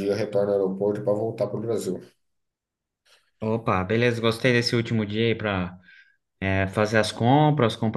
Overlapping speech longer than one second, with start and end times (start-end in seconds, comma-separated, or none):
none